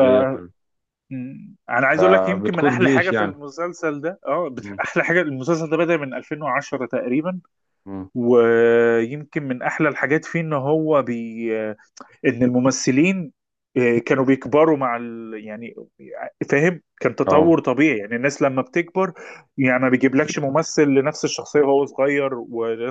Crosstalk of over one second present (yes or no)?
yes